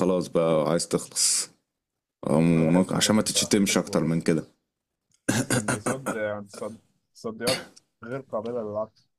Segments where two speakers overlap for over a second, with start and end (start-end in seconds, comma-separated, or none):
2.5-4.1